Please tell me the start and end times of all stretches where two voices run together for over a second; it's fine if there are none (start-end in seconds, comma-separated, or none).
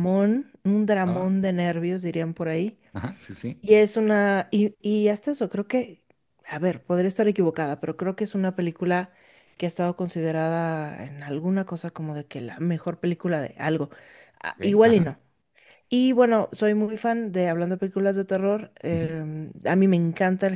none